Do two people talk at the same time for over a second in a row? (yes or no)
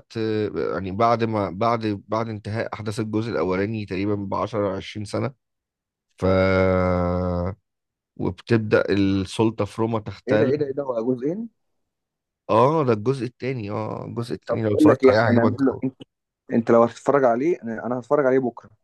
yes